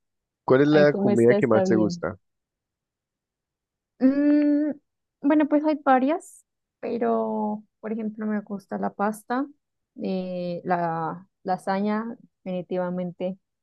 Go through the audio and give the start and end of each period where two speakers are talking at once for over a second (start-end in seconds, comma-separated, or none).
0.7-2.1